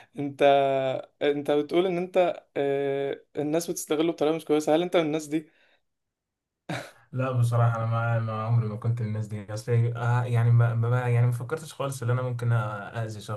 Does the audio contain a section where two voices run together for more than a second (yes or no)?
no